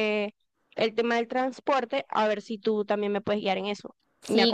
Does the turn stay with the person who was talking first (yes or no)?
no